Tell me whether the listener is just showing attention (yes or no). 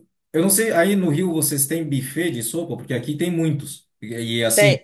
yes